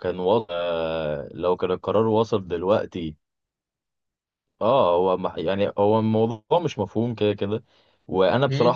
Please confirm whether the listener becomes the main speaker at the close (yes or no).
no